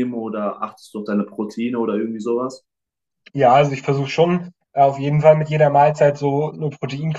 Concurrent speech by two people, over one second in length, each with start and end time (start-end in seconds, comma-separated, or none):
none